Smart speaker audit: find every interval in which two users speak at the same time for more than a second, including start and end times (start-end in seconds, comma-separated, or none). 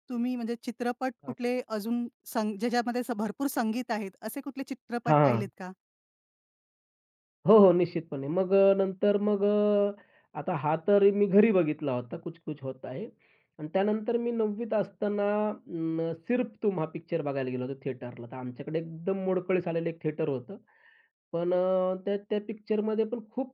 none